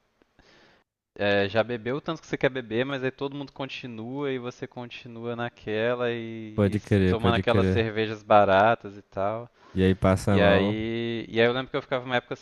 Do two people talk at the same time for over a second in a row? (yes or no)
yes